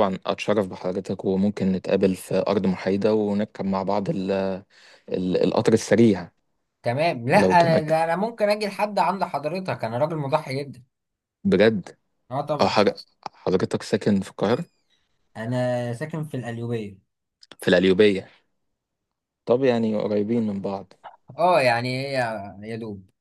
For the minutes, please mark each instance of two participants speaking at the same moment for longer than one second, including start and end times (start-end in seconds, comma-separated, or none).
none